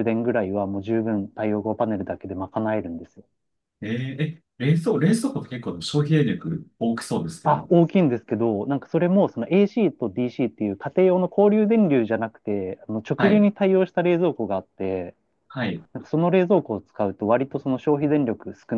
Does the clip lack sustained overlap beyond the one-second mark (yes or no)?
yes